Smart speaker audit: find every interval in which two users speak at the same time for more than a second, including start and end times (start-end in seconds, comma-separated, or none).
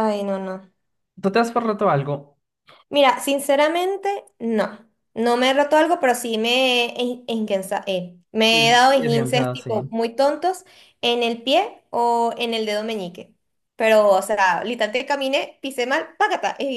8.5-9.7